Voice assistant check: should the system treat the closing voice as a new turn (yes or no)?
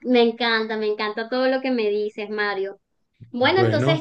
no